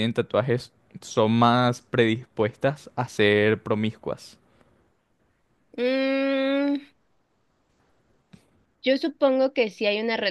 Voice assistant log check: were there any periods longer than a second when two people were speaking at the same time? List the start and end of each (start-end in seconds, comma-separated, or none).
none